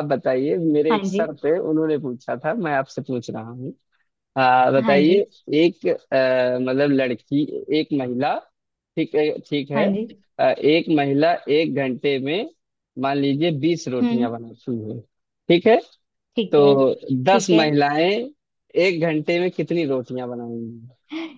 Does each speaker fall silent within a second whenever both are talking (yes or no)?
yes